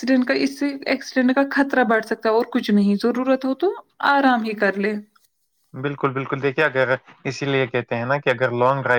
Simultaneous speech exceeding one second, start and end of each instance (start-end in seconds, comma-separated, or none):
none